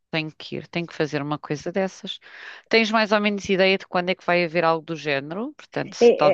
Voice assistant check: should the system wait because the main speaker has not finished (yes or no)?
no